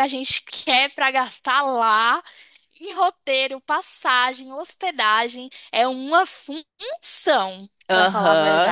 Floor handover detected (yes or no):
yes